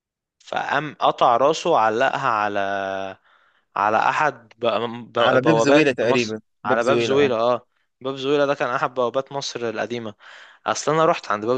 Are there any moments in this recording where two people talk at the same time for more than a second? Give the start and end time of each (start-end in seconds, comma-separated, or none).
5.2-7.3